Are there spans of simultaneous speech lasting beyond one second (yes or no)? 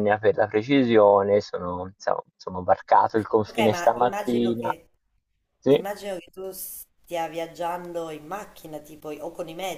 yes